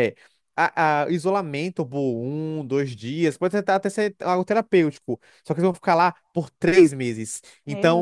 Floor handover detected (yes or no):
no